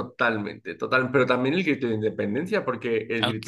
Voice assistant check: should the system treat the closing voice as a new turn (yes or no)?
no